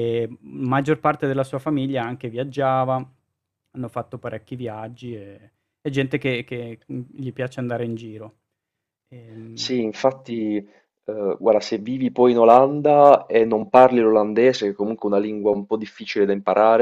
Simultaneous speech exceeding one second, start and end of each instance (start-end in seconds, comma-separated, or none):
none